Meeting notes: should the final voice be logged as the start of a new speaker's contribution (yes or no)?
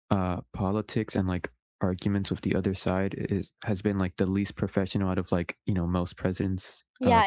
yes